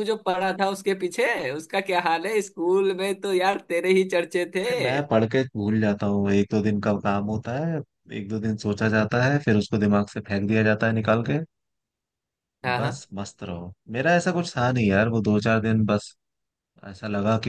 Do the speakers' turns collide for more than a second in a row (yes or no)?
no